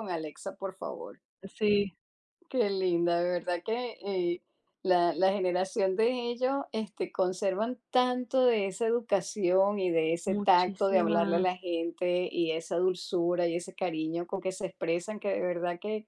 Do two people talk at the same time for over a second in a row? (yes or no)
yes